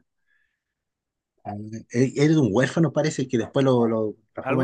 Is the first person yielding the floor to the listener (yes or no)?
no